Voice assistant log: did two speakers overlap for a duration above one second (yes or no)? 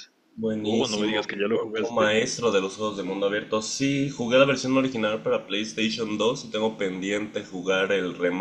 yes